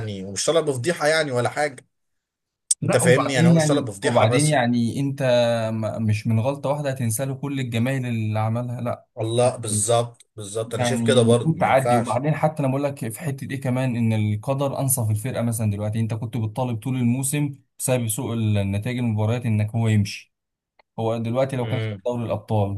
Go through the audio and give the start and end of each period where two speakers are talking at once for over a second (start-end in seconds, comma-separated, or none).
2.8-4.6, 10.8-12.2